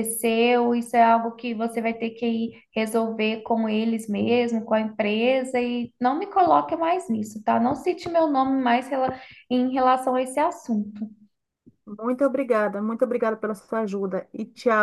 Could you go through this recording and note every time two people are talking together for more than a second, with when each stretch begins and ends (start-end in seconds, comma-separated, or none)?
none